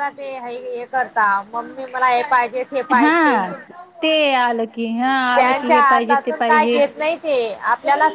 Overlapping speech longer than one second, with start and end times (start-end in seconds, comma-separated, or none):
5.3-6.8